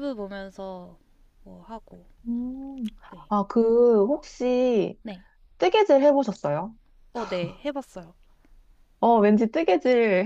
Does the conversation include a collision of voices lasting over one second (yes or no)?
no